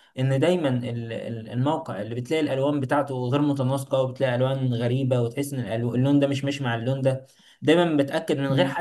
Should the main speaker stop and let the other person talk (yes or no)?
no